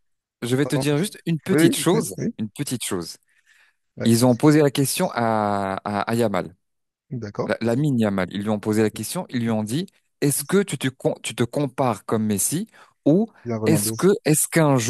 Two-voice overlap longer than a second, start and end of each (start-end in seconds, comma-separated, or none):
none